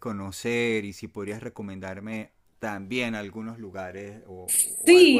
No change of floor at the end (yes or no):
no